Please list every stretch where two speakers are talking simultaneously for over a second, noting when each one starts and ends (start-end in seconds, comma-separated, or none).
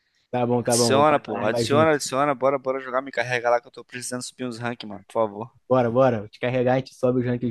0.6-1.9